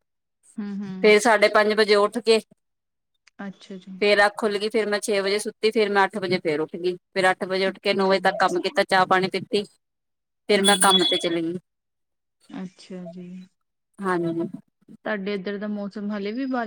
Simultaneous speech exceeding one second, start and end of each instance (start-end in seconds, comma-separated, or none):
none